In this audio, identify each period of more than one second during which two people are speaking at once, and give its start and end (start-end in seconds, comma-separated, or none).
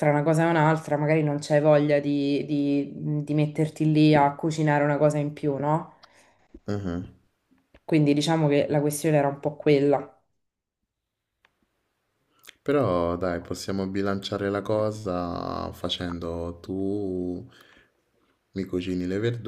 none